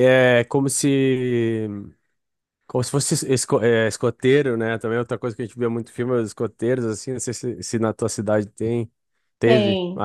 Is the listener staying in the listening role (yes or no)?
yes